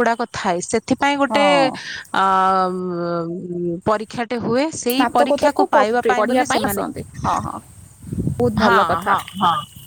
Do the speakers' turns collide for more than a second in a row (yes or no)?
yes